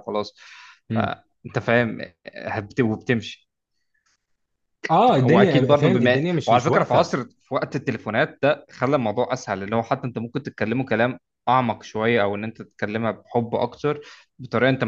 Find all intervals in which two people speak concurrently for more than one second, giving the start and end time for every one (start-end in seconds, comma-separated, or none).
5.0-7.1